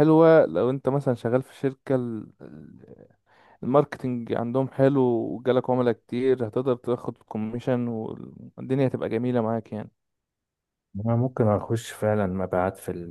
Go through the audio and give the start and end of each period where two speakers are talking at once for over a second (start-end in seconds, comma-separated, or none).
none